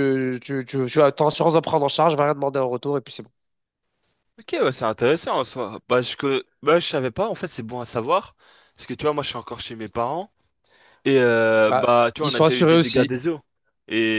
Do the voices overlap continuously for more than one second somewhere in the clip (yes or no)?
yes